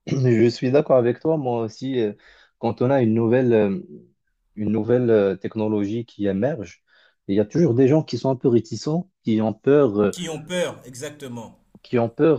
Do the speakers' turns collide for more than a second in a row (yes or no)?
no